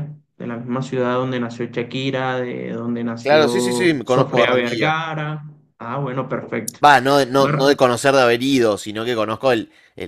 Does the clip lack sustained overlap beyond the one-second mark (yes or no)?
no